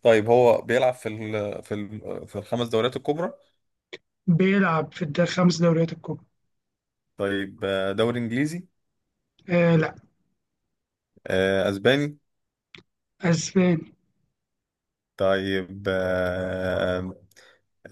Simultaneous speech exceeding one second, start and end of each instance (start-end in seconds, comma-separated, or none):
none